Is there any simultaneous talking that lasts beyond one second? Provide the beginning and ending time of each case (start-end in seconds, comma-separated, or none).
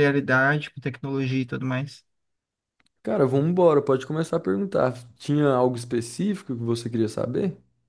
none